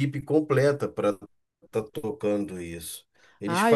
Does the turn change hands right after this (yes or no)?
no